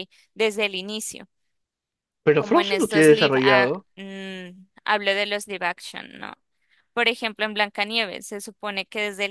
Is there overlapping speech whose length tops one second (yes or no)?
yes